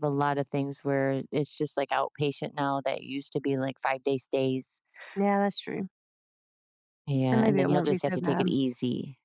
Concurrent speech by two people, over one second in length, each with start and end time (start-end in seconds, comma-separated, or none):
7.2-8.5